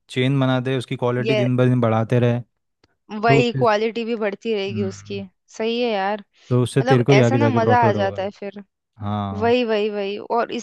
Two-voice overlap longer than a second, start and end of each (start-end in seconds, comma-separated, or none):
6.8-8.3